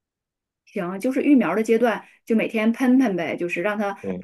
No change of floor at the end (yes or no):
yes